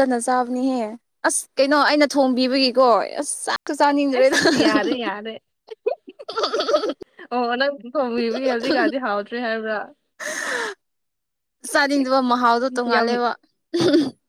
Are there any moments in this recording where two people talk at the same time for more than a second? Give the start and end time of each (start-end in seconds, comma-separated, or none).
none